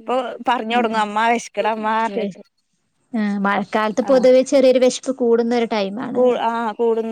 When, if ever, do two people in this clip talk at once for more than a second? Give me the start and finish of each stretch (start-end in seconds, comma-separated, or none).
none